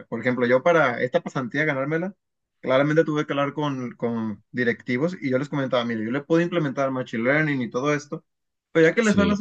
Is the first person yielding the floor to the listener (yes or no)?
no